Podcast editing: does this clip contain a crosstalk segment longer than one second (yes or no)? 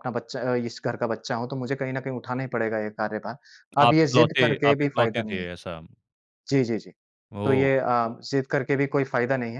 yes